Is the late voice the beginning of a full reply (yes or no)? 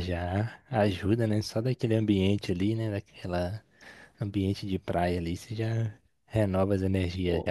no